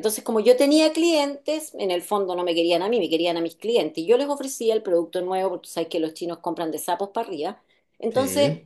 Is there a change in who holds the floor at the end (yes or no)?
no